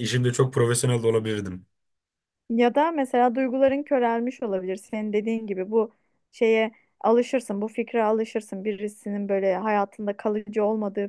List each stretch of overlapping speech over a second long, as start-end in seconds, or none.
none